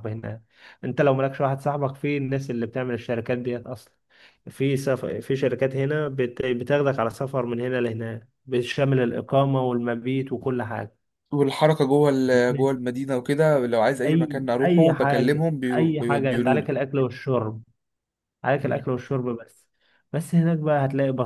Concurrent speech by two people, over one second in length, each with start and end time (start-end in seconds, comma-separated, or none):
14.1-16.7